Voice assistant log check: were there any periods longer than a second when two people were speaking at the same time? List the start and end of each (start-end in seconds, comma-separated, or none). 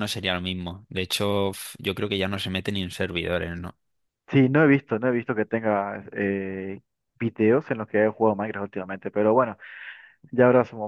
none